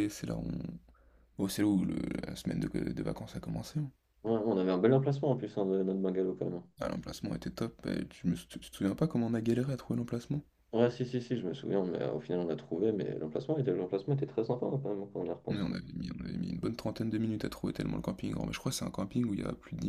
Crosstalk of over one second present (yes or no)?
no